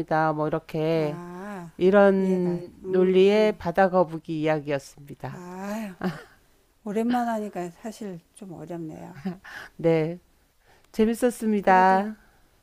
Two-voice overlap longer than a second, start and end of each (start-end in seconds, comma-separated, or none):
2.2-3.6